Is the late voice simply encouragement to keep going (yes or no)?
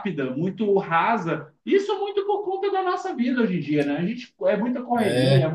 yes